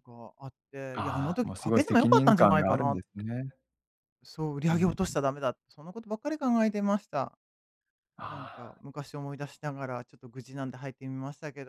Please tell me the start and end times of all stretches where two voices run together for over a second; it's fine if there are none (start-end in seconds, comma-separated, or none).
0.9-3.0